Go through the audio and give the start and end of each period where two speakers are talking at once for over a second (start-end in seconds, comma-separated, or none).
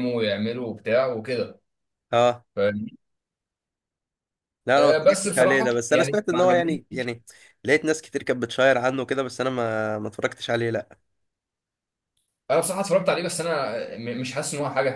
4.8-6.8